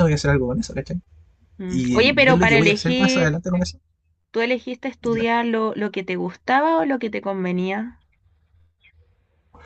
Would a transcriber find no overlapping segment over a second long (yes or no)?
no